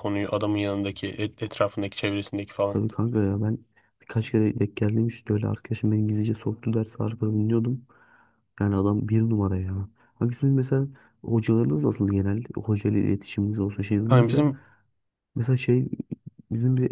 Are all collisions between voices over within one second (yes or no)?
yes